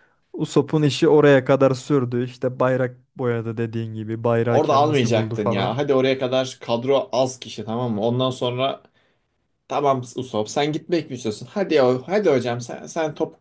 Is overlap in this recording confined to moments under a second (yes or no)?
no